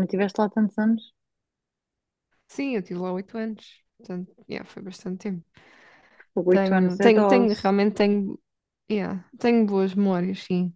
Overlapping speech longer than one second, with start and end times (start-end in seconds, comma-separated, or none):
6.5-7.7